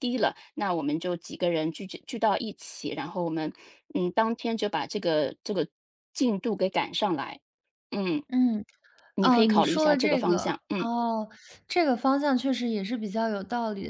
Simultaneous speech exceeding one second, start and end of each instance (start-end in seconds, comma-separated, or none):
9.2-10.9